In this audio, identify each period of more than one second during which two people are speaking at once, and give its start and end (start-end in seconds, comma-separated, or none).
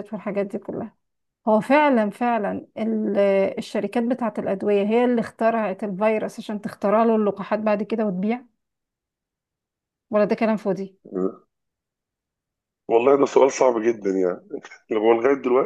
none